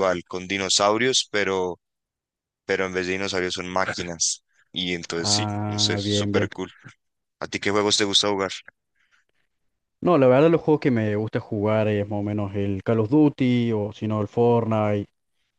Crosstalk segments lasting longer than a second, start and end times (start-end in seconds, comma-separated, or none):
5.2-6.5